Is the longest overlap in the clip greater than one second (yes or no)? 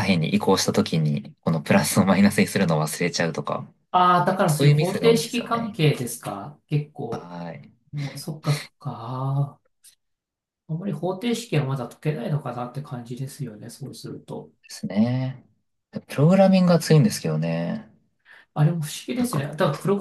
yes